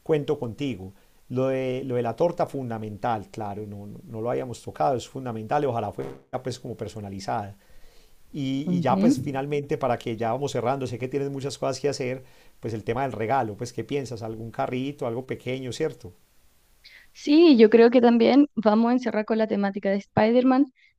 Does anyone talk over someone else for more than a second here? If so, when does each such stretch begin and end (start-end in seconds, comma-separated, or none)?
none